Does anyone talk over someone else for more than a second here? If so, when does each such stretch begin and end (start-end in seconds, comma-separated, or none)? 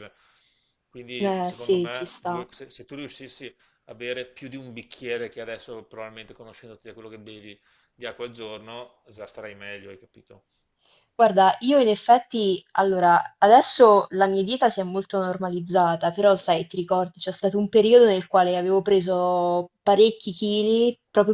1.2-2.5